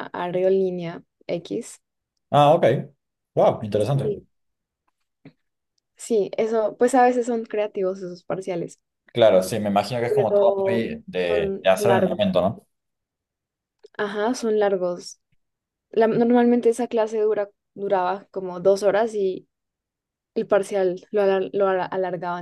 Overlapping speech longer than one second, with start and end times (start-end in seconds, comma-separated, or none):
10.1-12.2